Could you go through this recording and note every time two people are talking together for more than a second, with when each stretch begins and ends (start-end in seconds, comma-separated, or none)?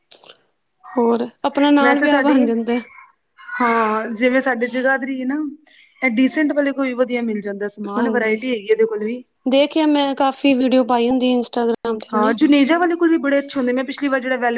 none